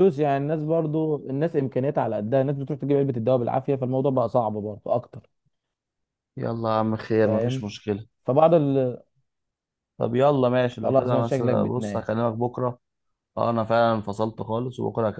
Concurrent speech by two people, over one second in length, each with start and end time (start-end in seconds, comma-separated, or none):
10.8-12.1